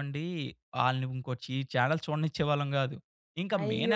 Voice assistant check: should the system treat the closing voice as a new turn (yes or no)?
yes